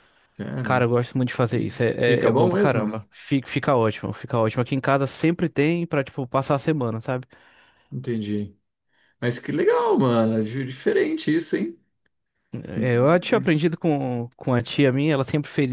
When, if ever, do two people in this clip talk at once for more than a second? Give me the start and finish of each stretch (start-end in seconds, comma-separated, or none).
1.5-3.1